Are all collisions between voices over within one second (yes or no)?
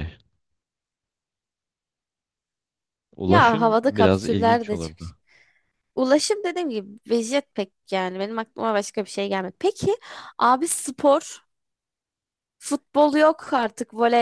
no